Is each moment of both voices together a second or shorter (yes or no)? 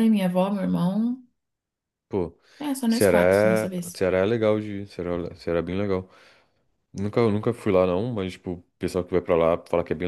yes